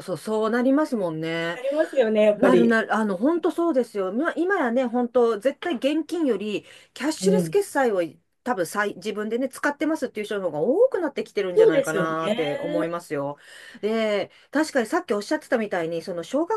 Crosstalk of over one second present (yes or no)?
yes